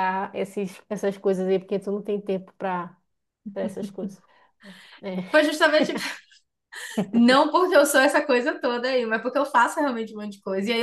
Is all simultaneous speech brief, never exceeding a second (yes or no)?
yes